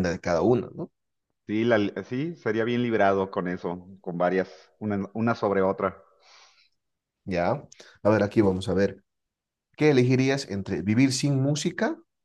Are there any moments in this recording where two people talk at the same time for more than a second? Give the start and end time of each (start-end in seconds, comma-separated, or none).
none